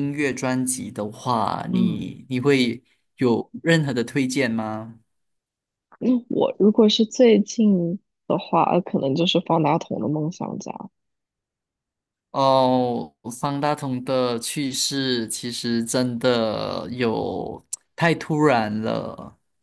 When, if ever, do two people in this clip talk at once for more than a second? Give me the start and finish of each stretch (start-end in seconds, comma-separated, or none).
none